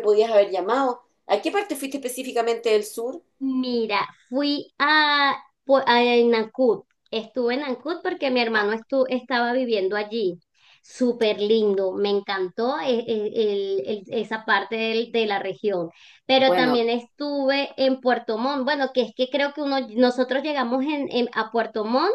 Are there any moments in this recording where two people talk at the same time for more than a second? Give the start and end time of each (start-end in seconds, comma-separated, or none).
none